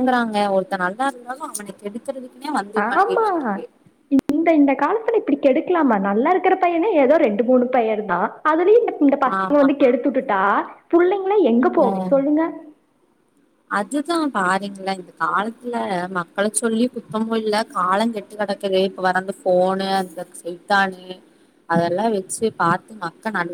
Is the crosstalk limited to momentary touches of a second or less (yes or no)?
yes